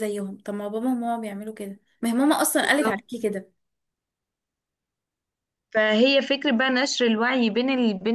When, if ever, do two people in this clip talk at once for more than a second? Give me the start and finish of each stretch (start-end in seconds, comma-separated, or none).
none